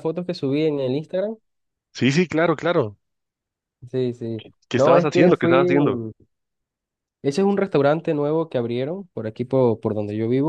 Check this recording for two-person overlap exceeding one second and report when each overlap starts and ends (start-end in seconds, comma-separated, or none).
4.7-6.0